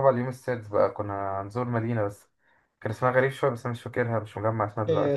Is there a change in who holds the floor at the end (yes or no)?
yes